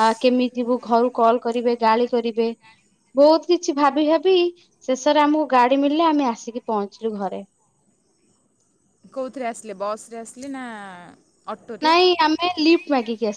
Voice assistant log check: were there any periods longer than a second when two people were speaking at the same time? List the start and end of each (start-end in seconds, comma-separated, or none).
none